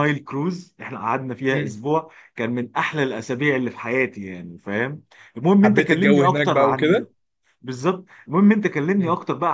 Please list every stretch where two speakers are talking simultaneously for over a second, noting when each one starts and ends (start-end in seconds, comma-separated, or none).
5.6-7.1